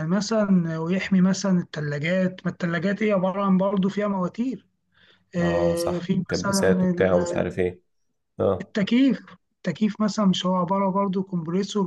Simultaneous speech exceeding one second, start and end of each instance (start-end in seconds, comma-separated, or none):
5.4-7.7